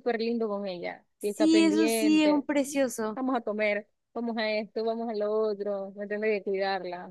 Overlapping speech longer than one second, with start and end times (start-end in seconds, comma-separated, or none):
1.2-2.5